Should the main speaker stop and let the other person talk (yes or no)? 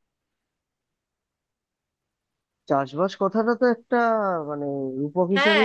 yes